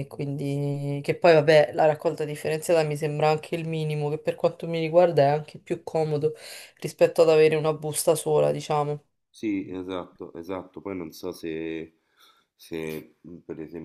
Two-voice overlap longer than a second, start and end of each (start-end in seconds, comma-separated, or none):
none